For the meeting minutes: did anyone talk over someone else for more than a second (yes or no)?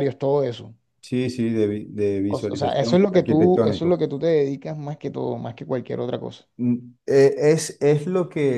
yes